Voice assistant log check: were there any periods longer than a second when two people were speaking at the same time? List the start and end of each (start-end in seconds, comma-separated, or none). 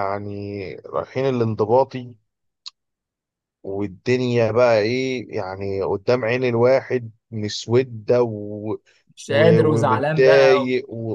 9.3-10.7